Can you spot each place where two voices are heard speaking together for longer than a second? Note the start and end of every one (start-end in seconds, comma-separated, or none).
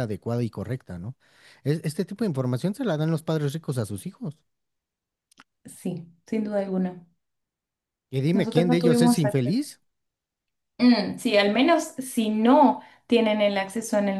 8.3-9.6